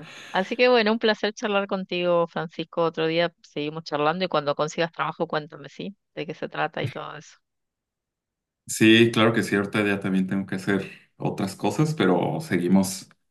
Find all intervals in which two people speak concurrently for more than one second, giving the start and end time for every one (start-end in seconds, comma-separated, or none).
none